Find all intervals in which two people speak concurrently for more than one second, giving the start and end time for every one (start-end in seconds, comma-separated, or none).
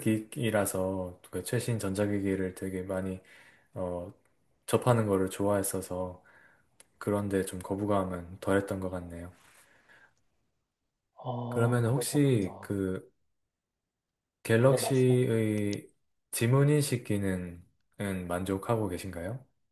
11.5-12.7